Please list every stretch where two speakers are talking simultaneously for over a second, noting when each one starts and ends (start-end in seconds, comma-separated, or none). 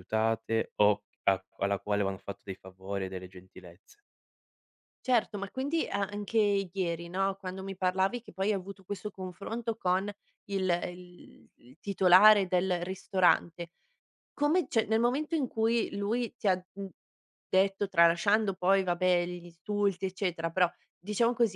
none